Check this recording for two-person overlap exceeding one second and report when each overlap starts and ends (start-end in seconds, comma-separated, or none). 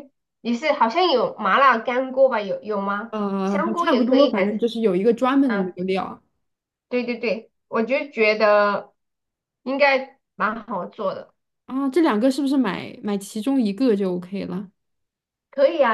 3.1-4.7